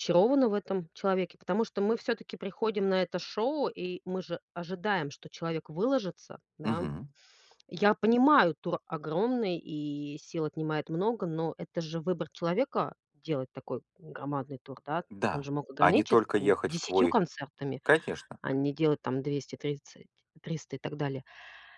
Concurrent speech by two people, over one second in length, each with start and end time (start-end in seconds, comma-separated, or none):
15.1-17.1